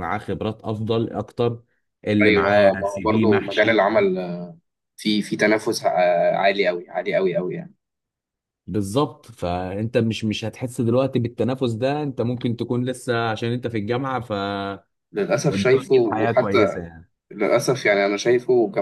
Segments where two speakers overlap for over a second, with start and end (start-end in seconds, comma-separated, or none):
2.2-3.8, 15.5-16.8